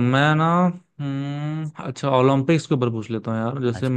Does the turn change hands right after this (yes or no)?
no